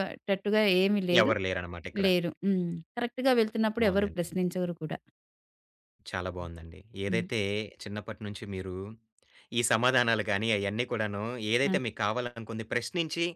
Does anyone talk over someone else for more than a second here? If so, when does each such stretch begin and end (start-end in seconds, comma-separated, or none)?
none